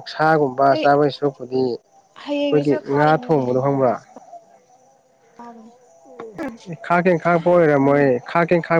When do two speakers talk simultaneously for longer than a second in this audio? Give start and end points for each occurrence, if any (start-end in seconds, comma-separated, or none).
2.4-3.9